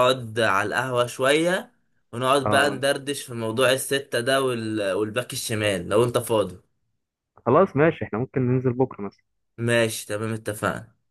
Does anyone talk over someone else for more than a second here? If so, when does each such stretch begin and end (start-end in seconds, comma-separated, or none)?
none